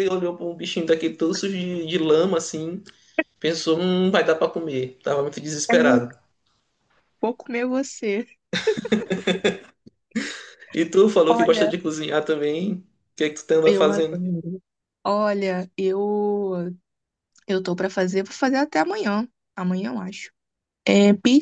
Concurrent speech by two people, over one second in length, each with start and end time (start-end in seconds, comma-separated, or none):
none